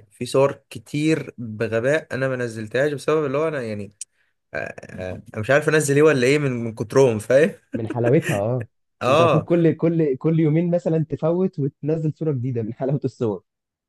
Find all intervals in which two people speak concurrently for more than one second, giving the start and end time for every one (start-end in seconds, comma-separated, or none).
none